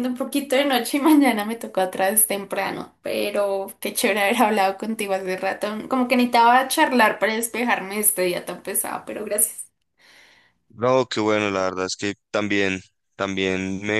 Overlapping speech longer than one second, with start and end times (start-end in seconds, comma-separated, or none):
none